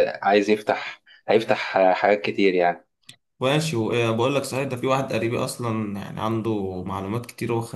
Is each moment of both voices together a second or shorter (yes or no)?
yes